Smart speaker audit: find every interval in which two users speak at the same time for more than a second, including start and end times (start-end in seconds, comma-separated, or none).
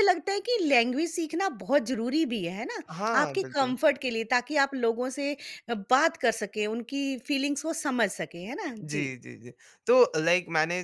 none